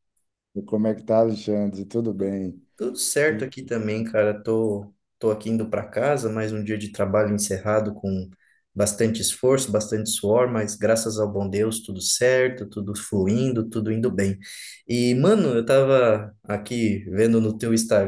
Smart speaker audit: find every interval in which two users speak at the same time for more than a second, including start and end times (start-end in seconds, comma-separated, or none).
none